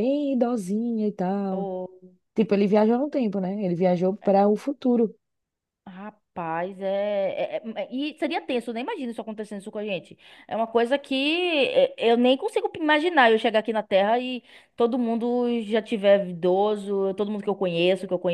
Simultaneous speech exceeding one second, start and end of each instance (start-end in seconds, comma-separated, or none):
none